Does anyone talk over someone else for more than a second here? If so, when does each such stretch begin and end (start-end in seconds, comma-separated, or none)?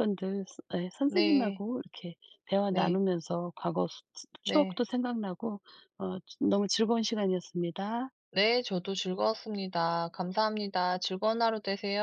none